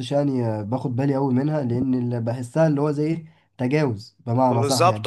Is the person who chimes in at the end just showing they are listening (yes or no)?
no